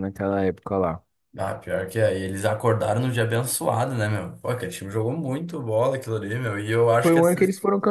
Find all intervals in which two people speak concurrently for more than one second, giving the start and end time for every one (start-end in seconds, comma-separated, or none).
none